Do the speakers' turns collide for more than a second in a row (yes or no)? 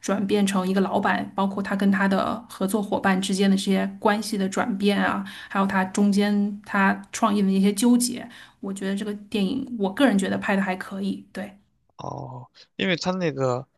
no